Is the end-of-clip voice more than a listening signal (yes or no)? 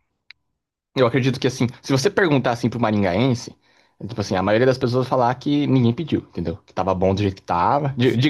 no